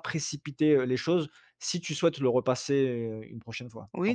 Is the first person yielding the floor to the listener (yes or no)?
yes